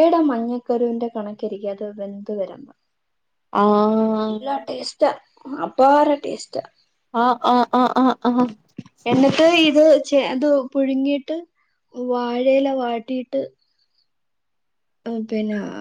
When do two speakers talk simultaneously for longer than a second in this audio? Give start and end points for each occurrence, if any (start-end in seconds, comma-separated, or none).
none